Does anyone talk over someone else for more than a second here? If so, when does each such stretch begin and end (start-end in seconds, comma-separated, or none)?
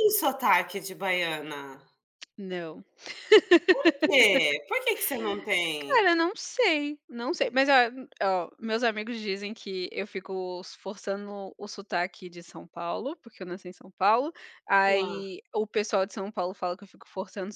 none